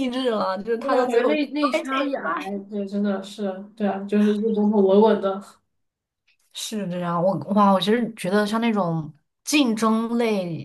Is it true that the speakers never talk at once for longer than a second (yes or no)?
no